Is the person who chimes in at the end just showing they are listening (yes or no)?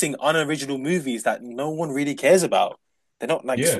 no